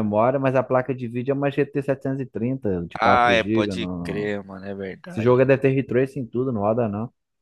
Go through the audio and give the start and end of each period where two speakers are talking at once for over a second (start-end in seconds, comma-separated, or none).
3.0-4.3